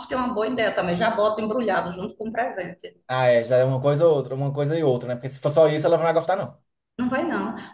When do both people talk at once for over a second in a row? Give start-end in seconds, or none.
none